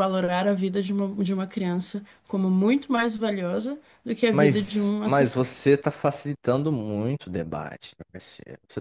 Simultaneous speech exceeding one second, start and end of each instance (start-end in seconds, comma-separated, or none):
4.3-5.5